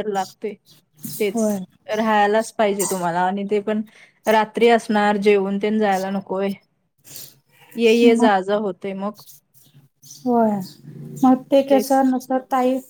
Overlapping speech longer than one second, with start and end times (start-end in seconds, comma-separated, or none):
none